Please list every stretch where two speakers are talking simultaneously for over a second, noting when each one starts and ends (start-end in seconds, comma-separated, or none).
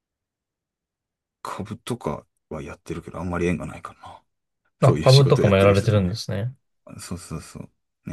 4.8-6.2